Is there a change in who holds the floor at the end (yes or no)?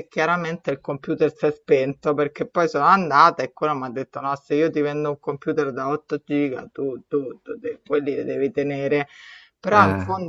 no